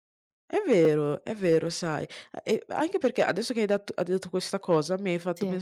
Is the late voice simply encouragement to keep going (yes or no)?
yes